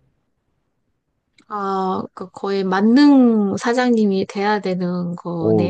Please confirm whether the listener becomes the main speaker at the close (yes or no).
yes